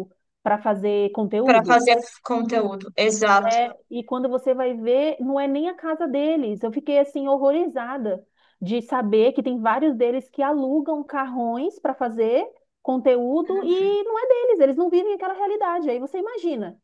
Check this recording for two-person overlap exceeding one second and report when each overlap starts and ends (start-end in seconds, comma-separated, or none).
none